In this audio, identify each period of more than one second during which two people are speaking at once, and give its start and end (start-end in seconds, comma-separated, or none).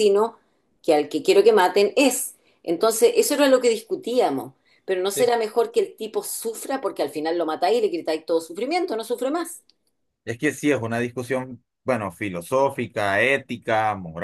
none